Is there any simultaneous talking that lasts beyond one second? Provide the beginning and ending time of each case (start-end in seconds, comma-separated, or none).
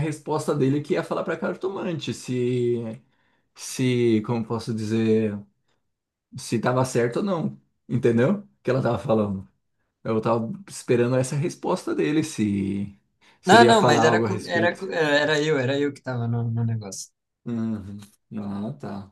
13.4-14.8